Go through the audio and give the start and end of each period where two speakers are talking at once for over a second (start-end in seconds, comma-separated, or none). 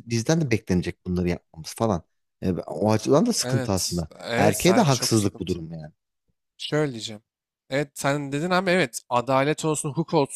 3.4-5.7